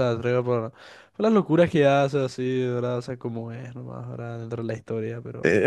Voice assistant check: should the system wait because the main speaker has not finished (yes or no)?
no